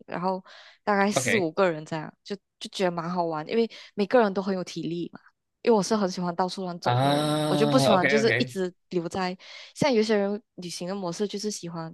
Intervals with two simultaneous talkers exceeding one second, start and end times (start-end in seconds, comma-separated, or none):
6.8-8.5